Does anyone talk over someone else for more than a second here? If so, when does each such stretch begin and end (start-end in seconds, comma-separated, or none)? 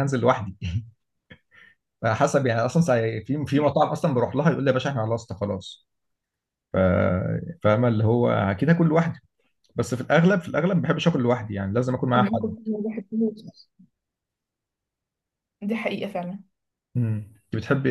none